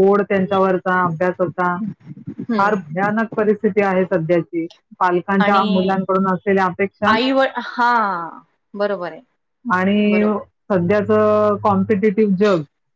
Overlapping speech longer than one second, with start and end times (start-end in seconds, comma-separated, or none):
none